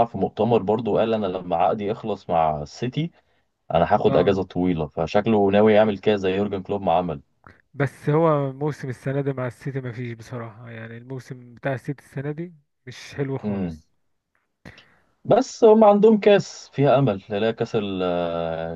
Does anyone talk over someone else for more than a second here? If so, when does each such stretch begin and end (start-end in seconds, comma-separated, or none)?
none